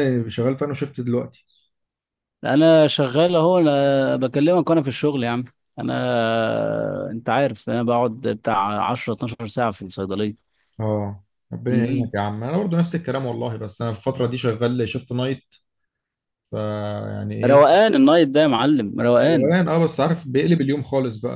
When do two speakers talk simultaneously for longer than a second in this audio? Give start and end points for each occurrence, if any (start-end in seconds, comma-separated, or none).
none